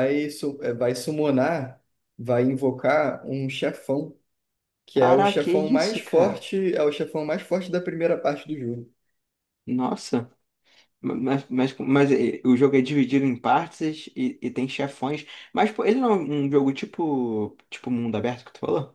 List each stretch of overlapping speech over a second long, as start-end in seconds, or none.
5.0-6.5